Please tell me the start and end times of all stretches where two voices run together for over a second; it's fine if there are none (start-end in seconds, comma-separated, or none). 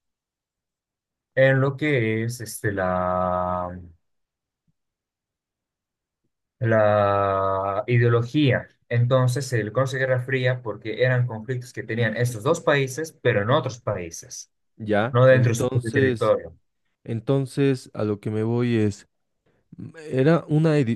15.1-16.4